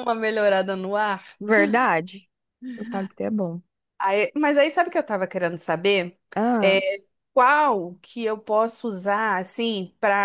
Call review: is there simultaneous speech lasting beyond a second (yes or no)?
no